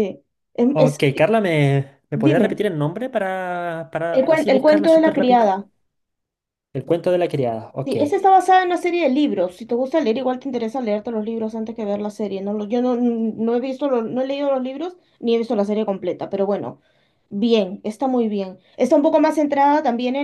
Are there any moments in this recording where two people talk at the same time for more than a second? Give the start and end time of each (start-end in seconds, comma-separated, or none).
4.1-5.5